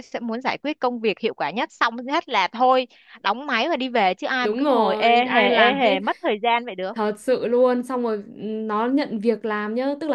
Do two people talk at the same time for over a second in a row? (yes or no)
yes